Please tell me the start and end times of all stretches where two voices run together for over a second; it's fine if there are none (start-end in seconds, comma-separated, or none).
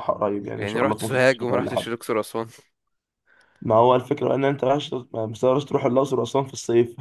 0.6-1.9